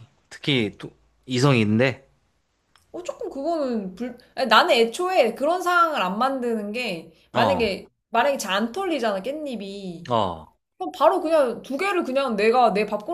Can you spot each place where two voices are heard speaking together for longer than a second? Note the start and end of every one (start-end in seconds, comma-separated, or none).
none